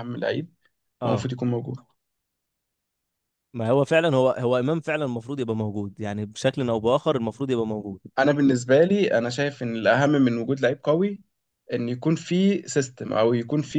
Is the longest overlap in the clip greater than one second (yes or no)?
no